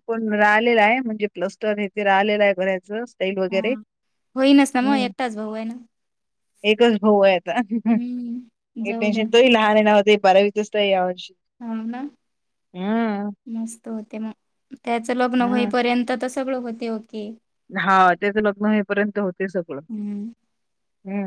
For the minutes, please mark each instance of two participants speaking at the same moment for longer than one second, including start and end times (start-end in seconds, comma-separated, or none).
none